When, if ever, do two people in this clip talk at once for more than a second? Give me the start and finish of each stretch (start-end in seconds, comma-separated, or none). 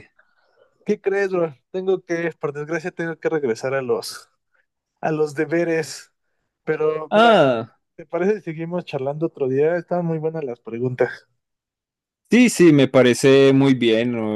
none